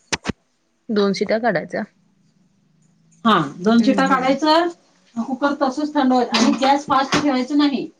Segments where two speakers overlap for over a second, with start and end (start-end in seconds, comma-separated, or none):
none